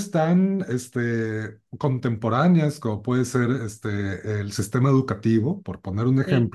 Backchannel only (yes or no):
yes